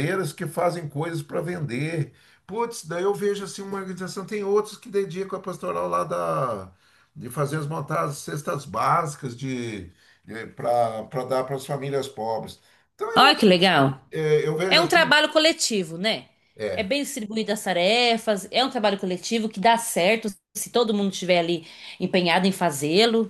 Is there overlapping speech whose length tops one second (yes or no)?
no